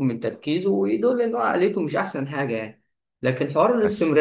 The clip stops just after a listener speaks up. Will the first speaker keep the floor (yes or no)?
yes